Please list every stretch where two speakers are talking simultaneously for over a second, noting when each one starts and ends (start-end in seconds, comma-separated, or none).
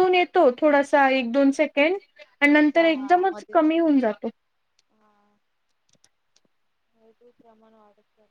2.5-3.9